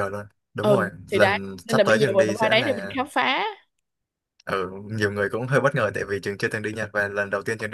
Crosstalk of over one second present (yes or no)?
yes